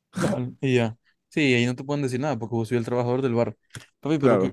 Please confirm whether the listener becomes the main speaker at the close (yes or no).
no